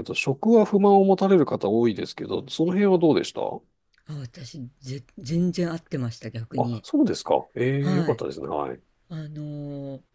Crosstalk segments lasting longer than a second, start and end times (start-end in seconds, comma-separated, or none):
none